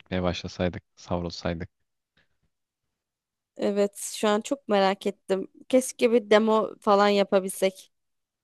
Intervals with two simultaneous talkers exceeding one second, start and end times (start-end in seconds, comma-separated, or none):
none